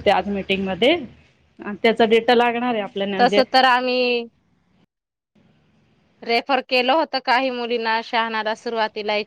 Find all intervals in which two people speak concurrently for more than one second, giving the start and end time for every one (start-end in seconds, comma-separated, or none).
none